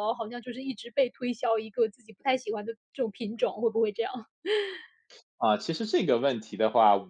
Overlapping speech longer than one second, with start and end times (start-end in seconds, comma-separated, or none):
none